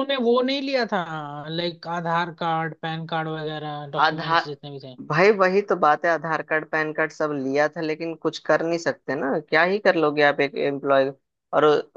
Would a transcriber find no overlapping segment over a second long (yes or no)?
yes